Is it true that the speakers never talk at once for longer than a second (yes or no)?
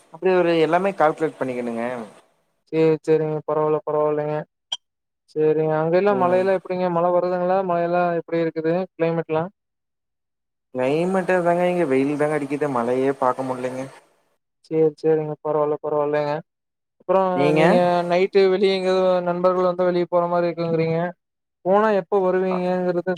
yes